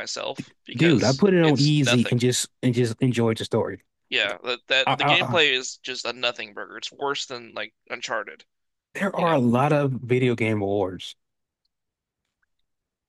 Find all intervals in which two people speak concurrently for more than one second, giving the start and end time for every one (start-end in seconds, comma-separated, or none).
0.7-2.1